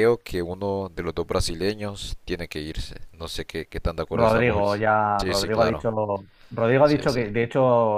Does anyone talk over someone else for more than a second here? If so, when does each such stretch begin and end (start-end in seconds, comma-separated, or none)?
4.1-5.8